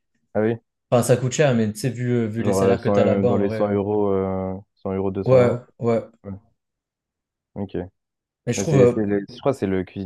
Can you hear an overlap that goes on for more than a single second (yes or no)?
yes